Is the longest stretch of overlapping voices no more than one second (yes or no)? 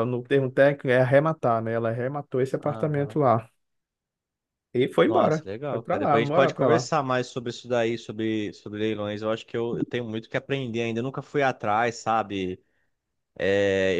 no